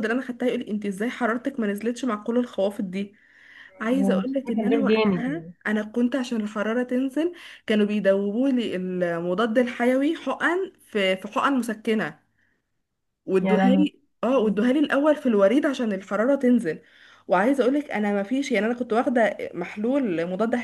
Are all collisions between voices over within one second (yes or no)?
no